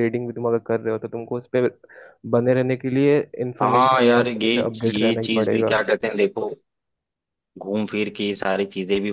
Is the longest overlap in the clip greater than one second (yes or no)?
yes